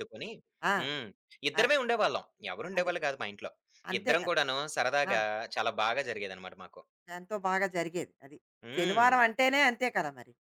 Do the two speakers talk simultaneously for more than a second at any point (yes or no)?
no